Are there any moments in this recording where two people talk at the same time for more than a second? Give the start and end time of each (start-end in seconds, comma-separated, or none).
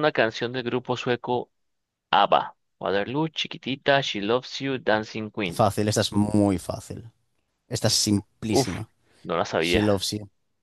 none